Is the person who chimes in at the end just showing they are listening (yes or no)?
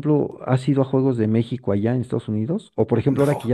yes